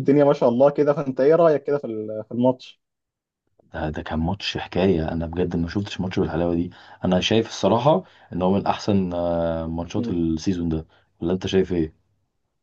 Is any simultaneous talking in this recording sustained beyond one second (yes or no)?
no